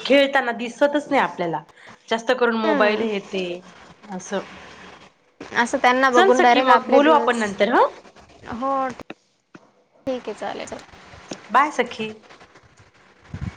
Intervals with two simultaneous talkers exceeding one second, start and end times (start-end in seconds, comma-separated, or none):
6.1-7.4